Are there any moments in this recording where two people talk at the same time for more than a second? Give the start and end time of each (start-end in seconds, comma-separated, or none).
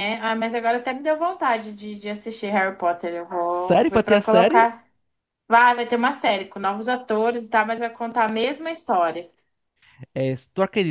3.5-4.7